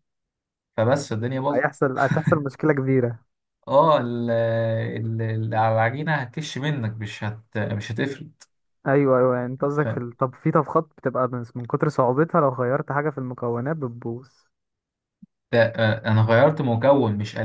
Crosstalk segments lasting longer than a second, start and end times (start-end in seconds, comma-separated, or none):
none